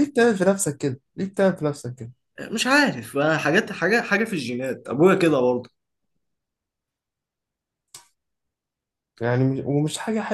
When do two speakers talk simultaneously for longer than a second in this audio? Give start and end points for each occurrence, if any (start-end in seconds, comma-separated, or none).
none